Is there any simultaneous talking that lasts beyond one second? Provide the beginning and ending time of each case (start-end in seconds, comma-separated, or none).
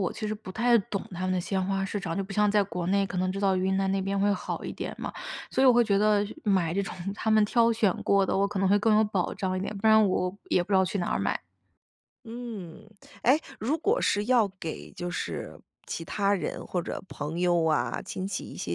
none